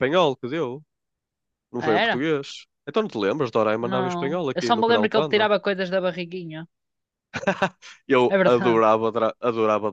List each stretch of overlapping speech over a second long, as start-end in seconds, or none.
3.8-5.5